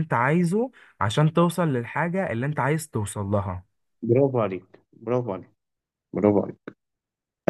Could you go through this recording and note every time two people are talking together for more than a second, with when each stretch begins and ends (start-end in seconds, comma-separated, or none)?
none